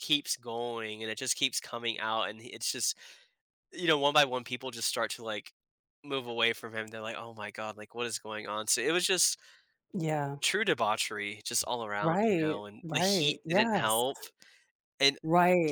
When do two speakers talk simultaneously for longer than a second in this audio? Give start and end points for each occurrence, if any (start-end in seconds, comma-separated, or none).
12.0-14.1